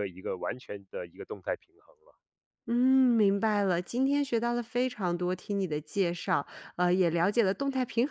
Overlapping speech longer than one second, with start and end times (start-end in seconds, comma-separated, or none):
none